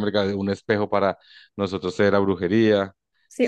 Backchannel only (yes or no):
no